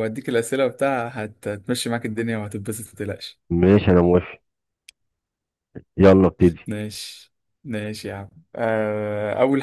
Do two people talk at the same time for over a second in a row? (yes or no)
no